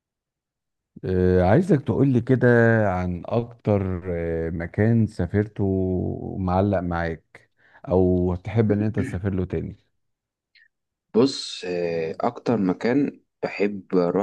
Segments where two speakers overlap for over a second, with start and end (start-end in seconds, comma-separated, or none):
none